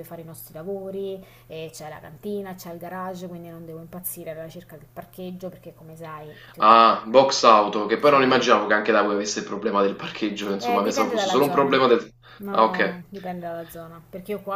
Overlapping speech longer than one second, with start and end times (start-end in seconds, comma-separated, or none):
10.6-11.8